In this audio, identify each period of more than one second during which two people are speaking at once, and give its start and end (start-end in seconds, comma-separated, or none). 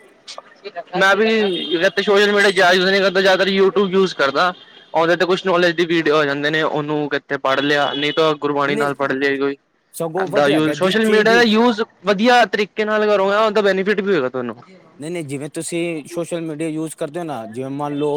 10.0-11.4